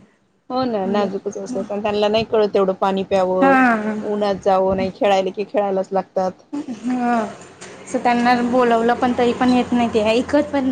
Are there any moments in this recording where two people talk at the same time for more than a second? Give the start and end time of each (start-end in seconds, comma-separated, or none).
none